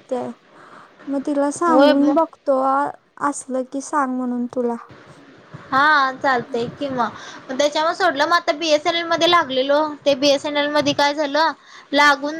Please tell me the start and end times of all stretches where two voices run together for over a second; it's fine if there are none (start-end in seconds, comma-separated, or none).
none